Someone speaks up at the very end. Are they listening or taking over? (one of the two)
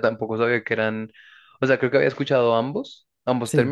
listening